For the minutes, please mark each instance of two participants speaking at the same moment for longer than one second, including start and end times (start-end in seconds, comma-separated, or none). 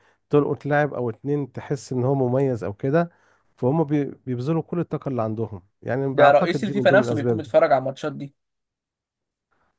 6.1-7.5